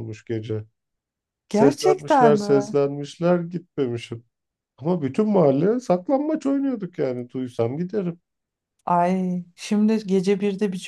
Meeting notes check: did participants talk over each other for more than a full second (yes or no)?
yes